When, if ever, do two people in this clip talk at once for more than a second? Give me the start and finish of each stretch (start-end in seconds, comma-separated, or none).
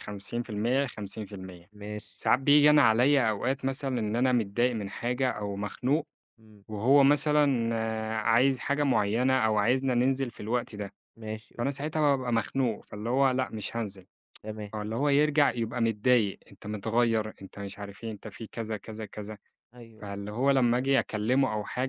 none